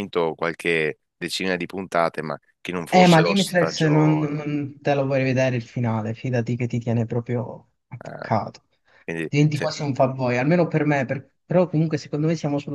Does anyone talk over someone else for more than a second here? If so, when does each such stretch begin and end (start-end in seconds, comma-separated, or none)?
2.9-4.4